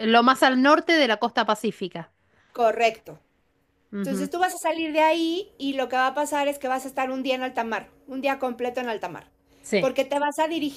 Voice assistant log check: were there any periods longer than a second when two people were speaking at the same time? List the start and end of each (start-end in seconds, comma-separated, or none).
none